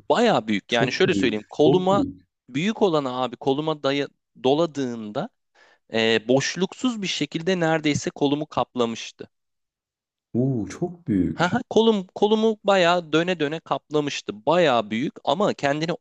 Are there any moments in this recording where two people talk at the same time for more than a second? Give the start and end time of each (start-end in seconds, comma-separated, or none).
0.7-2.0